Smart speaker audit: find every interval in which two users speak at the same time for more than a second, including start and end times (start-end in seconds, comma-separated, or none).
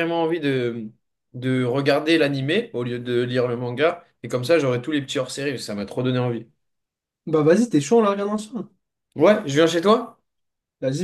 none